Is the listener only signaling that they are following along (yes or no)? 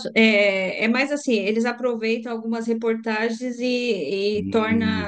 yes